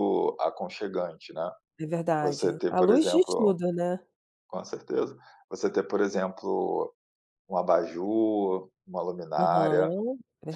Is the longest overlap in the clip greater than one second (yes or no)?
yes